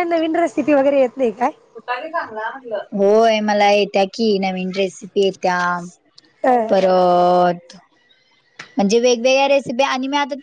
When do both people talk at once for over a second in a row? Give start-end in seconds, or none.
none